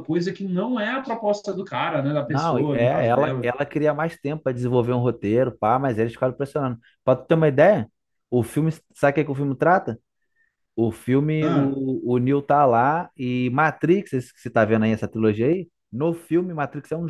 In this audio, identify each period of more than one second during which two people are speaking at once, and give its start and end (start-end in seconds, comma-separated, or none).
2.3-3.5